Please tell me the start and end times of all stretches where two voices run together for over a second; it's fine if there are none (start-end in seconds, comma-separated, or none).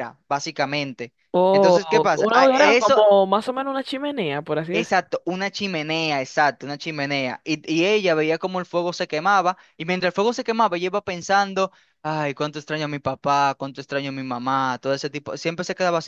1.5-3.0